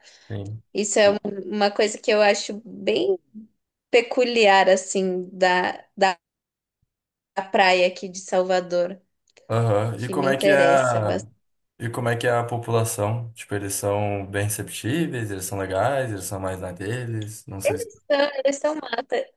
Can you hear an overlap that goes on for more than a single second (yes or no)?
yes